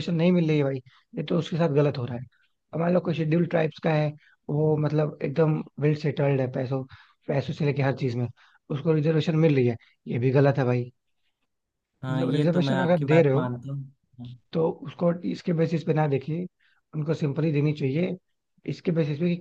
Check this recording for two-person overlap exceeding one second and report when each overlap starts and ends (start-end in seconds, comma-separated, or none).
12.1-13.5